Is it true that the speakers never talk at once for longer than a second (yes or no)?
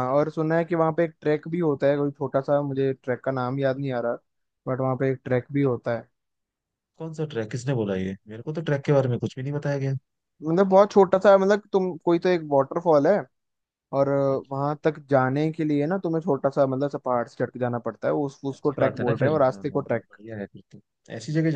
no